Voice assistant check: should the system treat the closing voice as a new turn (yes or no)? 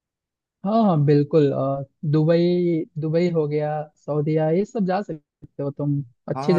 yes